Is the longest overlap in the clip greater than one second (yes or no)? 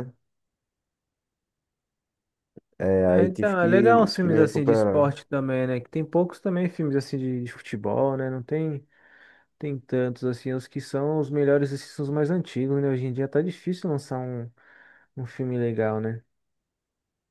yes